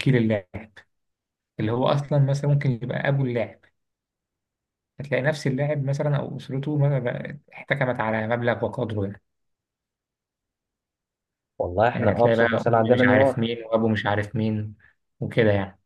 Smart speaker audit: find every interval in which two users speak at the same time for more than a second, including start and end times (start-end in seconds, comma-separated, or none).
11.9-13.5